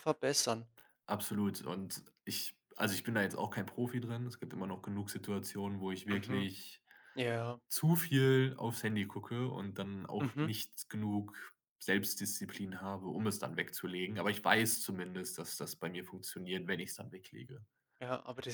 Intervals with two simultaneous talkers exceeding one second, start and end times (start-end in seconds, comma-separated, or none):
none